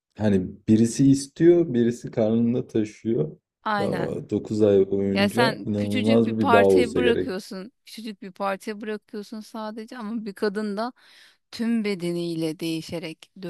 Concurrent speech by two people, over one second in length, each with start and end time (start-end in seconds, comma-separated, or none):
5.1-7.3